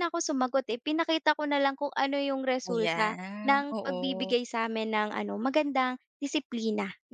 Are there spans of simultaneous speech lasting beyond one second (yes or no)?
yes